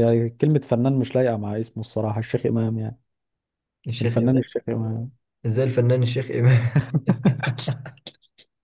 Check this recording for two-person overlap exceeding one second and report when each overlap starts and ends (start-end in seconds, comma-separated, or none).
none